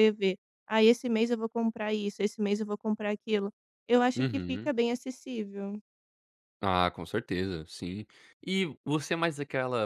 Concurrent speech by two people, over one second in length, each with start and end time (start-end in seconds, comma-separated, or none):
none